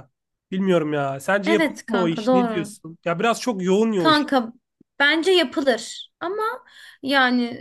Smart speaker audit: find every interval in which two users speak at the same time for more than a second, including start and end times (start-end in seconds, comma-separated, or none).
1.4-2.7